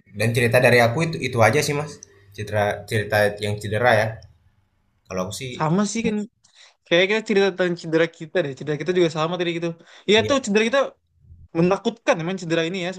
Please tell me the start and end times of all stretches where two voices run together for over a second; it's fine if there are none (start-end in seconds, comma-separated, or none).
none